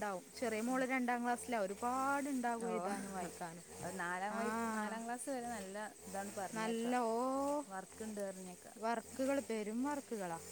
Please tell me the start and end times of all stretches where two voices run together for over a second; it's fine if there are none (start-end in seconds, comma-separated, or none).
none